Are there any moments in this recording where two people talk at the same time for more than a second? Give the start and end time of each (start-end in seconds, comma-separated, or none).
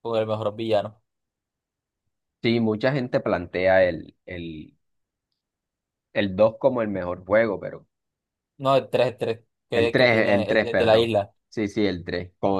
9.7-11.1